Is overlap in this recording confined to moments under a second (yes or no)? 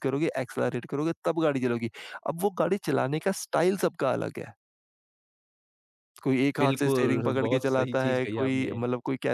no